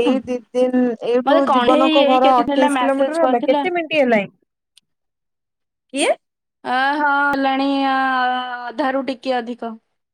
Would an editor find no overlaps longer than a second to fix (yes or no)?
no